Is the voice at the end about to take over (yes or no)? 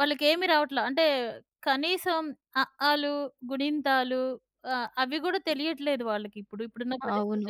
yes